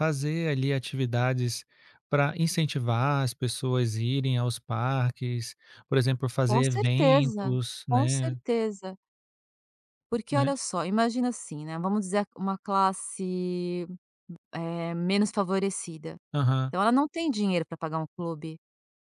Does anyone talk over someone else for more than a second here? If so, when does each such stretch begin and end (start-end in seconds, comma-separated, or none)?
6.5-8.4